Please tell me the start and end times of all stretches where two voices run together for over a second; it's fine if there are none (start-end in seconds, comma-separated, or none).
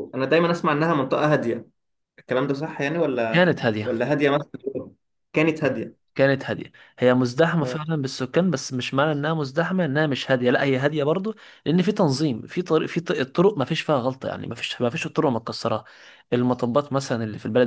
none